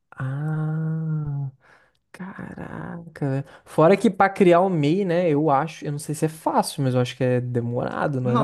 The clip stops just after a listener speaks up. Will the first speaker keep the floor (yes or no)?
no